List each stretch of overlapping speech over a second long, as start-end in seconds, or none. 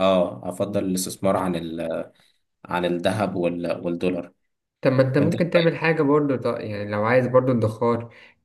none